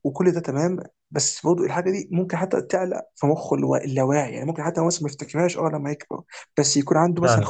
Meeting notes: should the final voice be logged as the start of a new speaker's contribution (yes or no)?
no